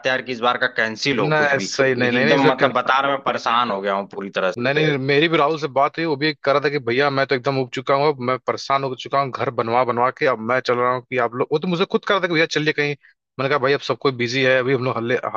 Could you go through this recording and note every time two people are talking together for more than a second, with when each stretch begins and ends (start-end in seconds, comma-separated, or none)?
1.1-2.7